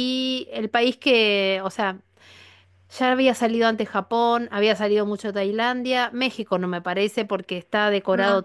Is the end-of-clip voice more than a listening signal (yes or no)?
no